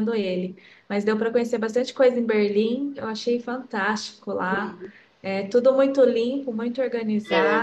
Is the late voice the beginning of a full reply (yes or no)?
no